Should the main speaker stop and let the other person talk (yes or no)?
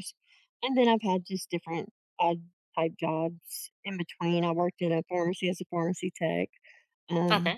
no